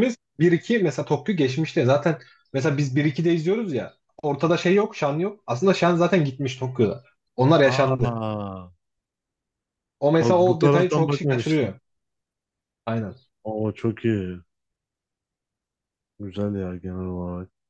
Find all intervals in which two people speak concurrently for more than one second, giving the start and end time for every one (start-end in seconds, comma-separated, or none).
10.2-11.7